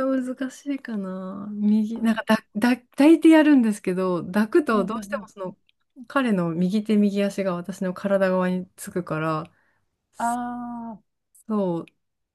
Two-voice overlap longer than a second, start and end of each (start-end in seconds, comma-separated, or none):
none